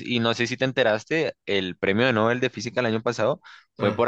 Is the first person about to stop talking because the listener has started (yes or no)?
no